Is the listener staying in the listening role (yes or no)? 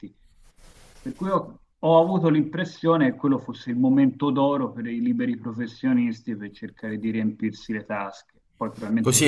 no